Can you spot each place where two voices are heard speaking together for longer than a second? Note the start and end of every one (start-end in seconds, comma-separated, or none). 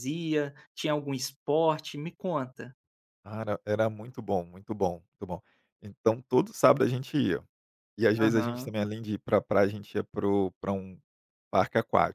none